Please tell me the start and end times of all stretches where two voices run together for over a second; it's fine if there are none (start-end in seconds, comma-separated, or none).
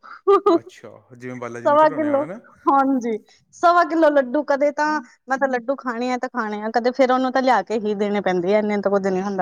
none